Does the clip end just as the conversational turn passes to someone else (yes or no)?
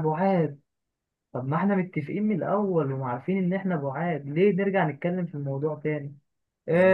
no